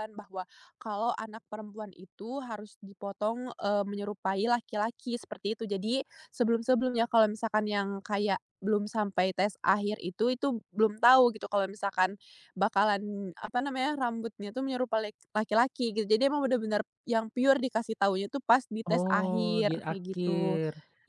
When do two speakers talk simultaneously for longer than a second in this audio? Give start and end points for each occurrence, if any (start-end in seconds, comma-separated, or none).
18.9-20.6